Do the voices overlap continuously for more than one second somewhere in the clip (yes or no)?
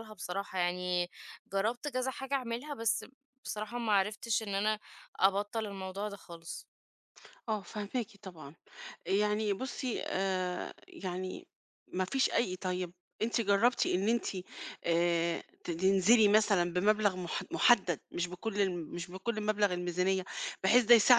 no